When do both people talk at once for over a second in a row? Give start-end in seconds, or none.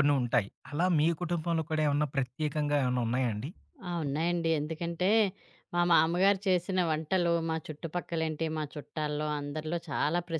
none